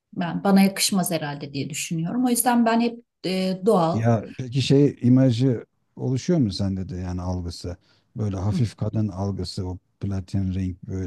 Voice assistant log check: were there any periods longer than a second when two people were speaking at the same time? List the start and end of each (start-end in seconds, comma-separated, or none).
none